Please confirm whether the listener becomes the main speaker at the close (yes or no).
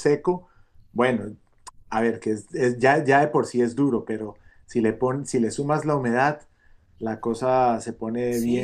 yes